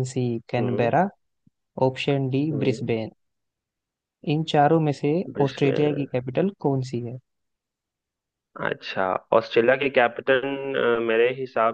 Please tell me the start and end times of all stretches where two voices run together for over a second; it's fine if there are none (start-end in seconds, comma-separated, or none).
none